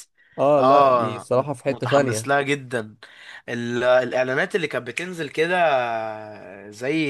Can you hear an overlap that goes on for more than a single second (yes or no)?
yes